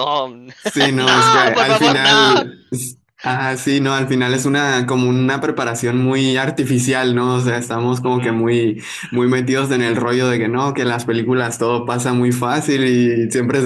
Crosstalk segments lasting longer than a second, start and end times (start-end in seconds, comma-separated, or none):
1.0-2.5